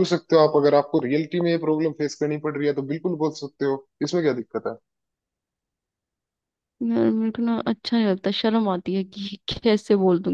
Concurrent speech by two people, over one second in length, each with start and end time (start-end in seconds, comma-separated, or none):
none